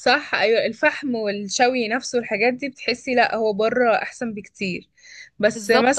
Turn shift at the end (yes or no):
no